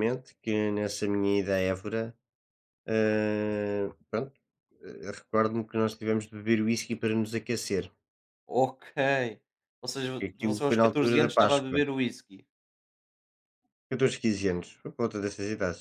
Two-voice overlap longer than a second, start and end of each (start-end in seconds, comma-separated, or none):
10.3-11.8